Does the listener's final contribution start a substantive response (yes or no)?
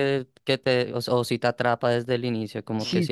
yes